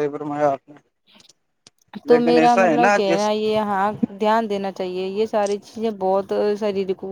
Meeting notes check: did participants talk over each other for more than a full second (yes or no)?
yes